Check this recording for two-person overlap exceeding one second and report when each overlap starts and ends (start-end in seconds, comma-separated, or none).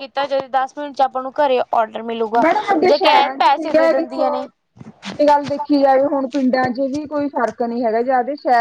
none